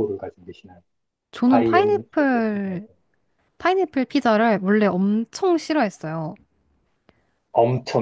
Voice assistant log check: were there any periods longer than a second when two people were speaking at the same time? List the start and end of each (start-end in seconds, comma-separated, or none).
1.4-2.9